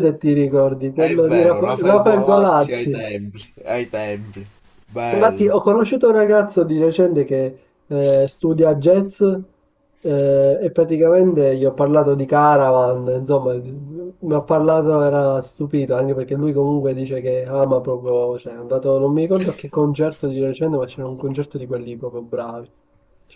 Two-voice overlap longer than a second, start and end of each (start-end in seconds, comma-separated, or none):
0.9-3.0